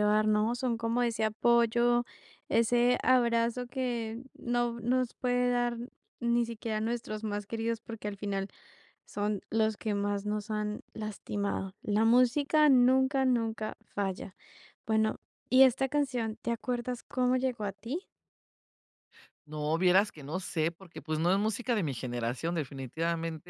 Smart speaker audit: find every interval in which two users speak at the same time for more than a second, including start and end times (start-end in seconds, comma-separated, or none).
none